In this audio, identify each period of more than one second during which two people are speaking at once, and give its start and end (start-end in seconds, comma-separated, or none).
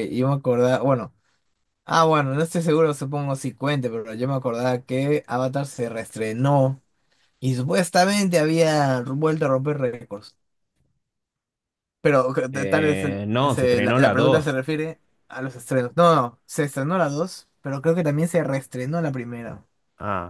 12.5-14.6